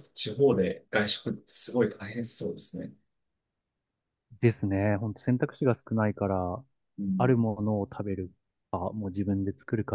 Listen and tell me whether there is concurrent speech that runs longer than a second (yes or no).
no